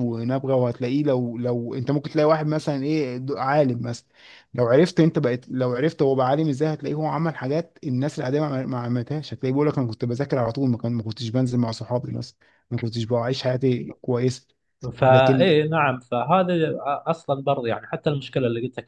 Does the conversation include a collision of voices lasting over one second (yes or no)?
no